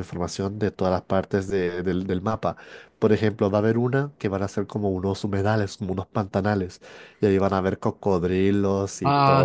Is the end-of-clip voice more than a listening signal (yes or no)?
yes